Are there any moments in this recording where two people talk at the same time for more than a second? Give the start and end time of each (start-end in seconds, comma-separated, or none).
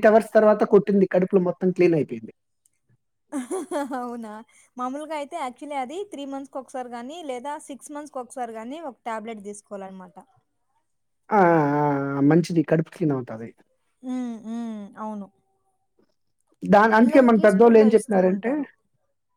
17.0-18.5